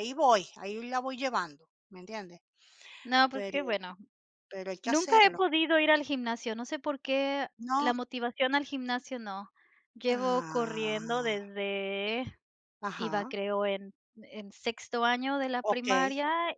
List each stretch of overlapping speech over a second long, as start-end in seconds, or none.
10.1-11.4